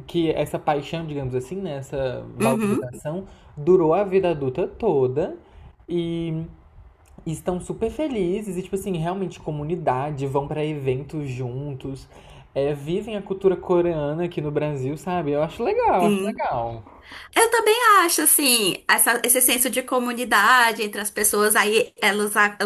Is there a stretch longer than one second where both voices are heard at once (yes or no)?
no